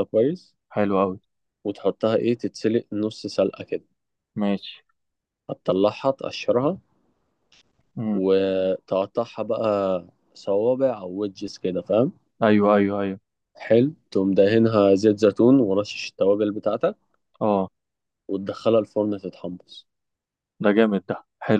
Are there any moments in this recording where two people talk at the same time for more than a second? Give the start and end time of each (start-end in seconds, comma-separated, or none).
none